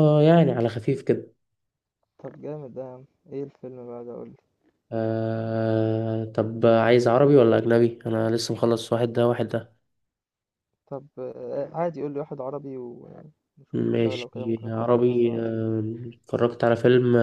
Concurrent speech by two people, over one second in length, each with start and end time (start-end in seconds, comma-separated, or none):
13.7-15.4